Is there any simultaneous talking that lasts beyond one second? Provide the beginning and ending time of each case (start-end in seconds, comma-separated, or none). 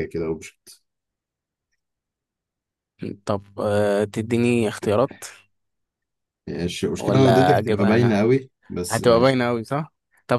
7.0-8.2